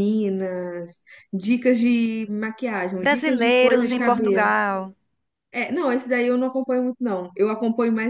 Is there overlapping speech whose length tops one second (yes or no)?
yes